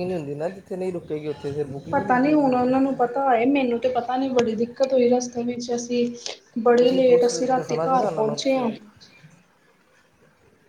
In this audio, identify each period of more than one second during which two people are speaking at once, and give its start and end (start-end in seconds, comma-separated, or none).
6.7-8.7